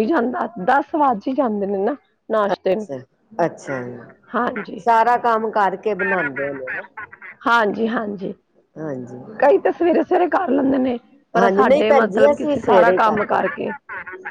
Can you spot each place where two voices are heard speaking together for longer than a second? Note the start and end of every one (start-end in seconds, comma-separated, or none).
11.4-13.6